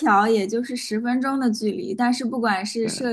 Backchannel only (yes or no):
yes